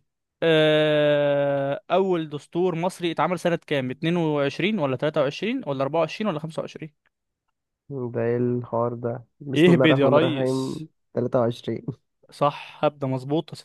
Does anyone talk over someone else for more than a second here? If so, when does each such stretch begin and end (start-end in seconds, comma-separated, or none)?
9.6-10.8